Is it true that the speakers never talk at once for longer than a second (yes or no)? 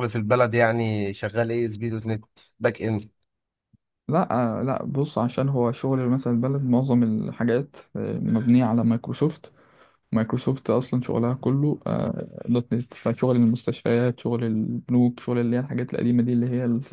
yes